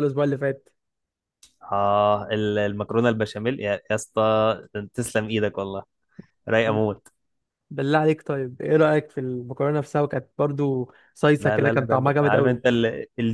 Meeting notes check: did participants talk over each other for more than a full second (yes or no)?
yes